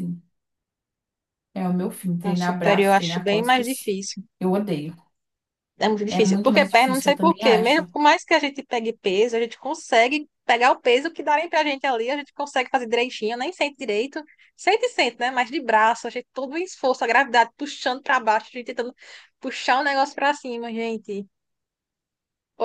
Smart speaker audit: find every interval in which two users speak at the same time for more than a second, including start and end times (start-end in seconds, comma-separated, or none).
2.2-3.9, 6.1-7.9